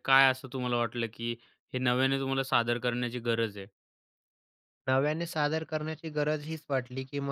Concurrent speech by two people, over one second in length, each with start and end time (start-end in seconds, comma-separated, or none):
none